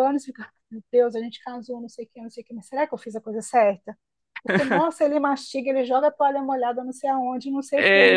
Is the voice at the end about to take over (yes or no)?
yes